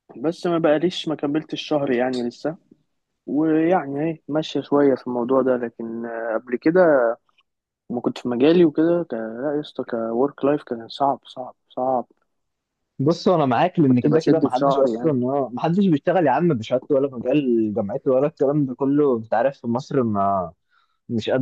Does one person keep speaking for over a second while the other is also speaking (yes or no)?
yes